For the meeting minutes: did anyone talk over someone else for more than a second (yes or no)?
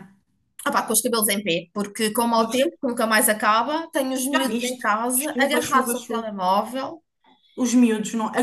yes